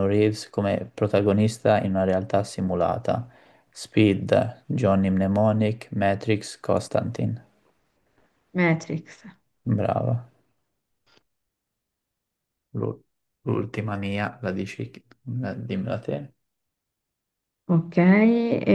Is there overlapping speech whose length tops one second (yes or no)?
no